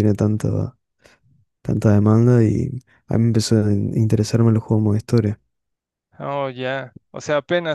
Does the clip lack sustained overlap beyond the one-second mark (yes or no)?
yes